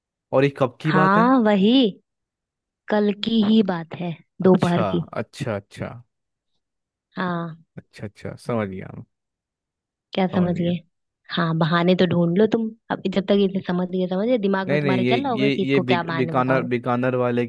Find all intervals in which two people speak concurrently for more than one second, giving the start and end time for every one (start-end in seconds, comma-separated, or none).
14.7-16.7